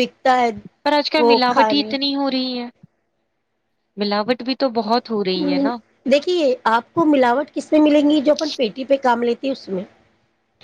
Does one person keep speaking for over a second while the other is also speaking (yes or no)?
no